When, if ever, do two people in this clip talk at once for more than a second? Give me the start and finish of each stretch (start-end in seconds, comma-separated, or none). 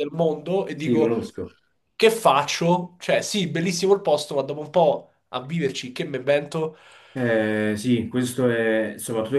none